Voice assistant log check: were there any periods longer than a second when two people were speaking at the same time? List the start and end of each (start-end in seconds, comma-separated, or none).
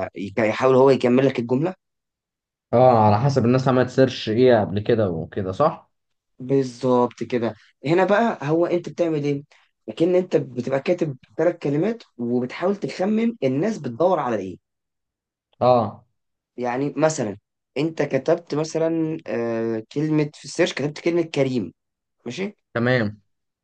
none